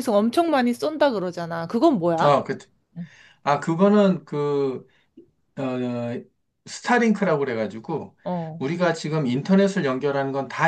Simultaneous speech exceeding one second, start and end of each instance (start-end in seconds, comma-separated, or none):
none